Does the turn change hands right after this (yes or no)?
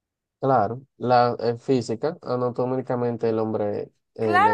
yes